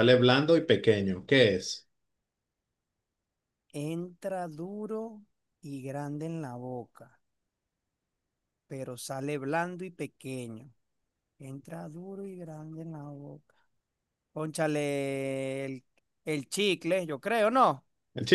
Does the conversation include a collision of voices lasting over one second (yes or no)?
no